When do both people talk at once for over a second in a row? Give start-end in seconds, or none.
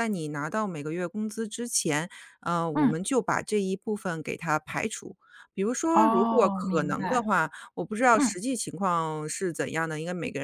5.9-7.3